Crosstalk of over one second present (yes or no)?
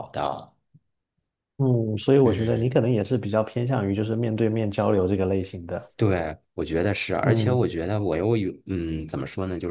no